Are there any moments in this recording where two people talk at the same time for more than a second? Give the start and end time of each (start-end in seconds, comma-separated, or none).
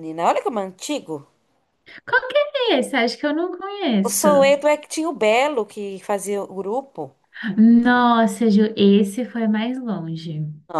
none